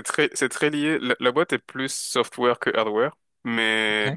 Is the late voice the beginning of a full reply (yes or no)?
no